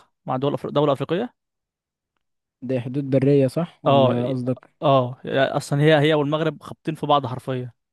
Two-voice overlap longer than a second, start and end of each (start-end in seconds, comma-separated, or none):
none